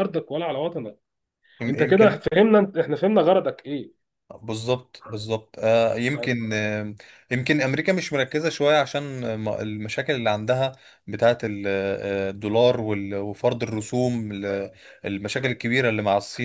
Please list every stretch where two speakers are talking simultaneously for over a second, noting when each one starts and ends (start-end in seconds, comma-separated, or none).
none